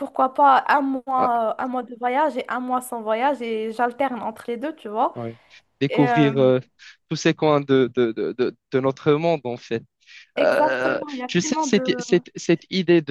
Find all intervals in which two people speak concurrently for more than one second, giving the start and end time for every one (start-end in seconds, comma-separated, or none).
10.4-12.0